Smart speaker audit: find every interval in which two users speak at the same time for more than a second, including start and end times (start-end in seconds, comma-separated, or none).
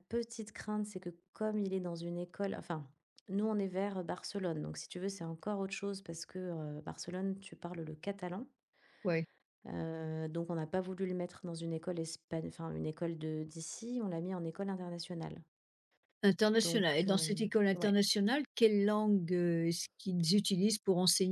16.6-18.0